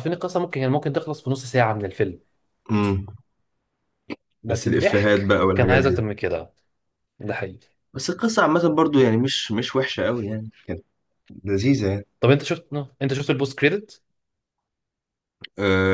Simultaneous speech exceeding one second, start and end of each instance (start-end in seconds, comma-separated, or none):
4.5-6.0